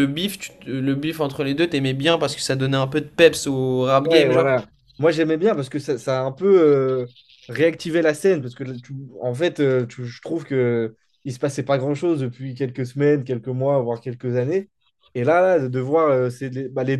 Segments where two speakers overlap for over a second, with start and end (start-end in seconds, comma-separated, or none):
none